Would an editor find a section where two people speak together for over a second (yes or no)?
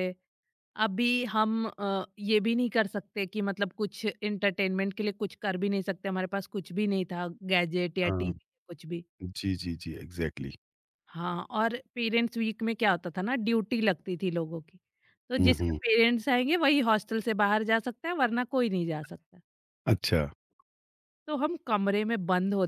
no